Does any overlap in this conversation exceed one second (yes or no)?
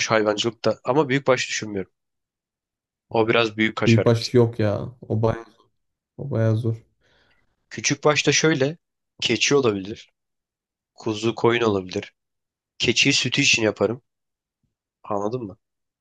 no